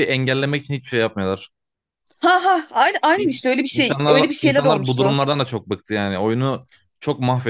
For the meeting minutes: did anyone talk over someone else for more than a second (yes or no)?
yes